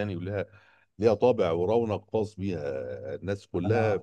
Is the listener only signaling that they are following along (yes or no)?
yes